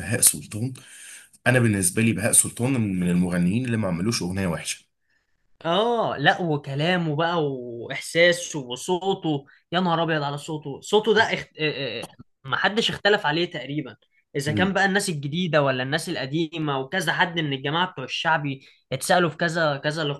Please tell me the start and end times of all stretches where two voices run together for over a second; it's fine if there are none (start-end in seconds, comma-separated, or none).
none